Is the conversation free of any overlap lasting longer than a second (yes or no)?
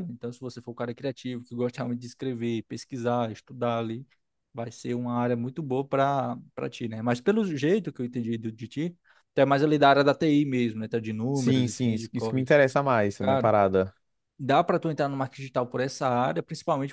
no